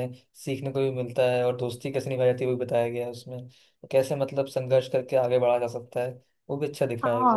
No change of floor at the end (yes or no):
no